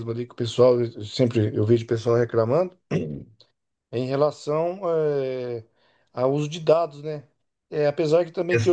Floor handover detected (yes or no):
no